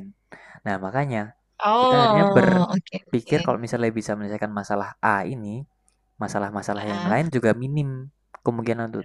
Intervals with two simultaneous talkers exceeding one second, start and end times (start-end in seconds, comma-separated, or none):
1.8-3.4